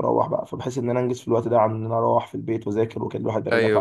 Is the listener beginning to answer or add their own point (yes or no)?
yes